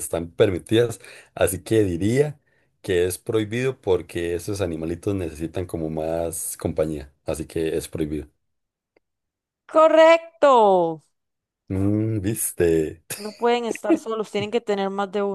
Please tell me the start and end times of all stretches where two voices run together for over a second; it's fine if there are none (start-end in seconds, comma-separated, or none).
none